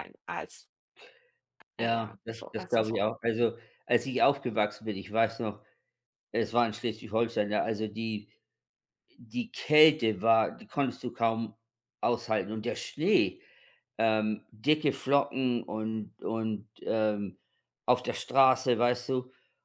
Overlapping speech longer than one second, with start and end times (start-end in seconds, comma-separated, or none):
1.8-3.1